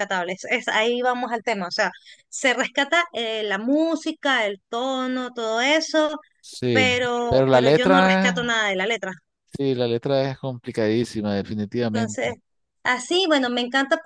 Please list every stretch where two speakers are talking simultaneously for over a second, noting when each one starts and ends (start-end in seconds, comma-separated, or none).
6.7-8.4